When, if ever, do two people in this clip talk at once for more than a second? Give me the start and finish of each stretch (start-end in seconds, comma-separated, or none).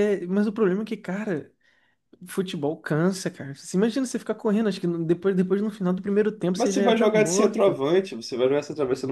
6.5-7.8